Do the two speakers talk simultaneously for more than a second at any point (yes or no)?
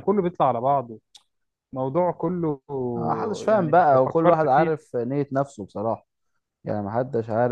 yes